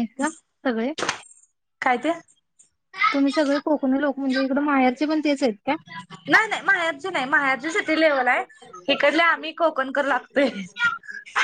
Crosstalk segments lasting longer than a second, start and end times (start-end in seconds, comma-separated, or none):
none